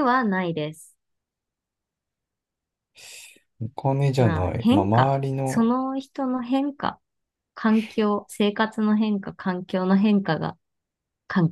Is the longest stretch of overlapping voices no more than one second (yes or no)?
no